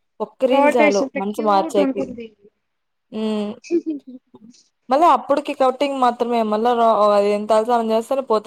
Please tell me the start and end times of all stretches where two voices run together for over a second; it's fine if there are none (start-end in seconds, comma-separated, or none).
0.5-2.0